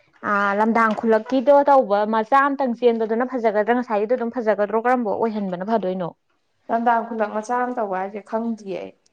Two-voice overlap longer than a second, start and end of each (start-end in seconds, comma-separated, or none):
none